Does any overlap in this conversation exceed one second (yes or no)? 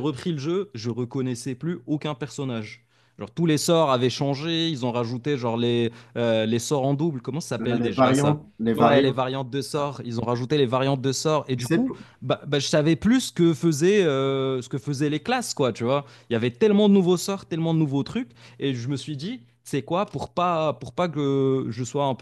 yes